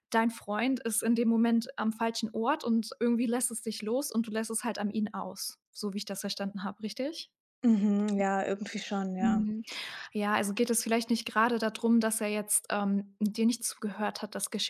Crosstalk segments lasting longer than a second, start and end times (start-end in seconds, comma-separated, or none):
none